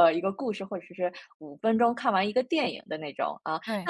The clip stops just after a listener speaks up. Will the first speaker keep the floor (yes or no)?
yes